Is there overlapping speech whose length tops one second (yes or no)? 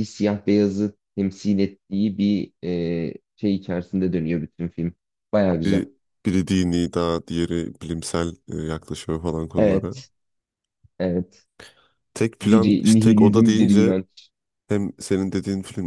yes